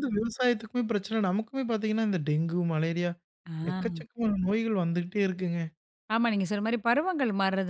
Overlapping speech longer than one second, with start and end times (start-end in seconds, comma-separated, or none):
none